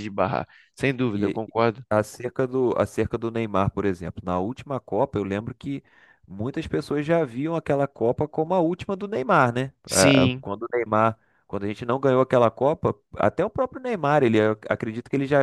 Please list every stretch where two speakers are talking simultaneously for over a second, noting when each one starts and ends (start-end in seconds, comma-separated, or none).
none